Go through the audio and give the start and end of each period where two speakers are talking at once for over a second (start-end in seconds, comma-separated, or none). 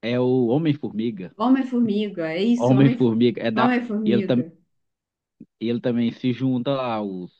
2.6-4.4